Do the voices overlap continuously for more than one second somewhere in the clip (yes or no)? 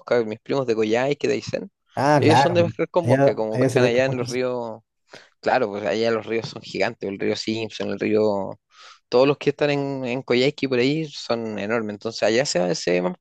yes